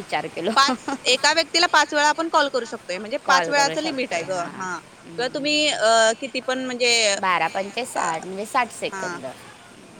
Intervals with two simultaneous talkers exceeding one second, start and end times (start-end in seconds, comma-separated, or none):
3.2-5.4